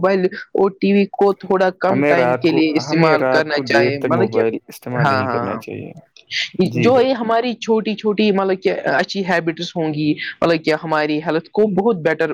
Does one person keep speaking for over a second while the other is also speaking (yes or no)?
yes